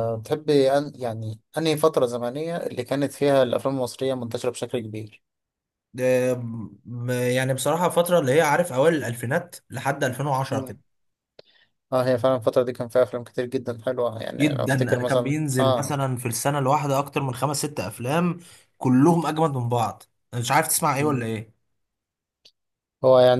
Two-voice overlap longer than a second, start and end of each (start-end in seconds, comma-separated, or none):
14.4-15.9